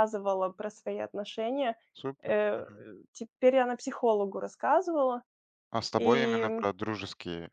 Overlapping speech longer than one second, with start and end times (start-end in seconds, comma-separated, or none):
none